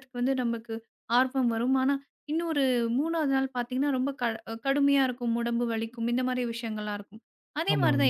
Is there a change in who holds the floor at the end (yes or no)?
no